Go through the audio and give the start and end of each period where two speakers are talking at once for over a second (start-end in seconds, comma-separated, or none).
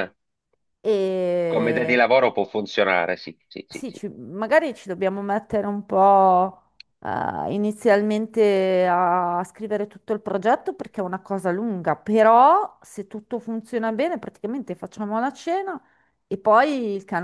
none